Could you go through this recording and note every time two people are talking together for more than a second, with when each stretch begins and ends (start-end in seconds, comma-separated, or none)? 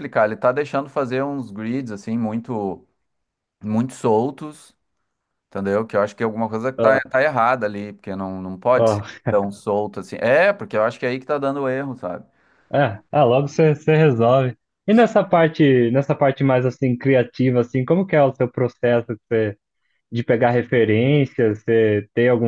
none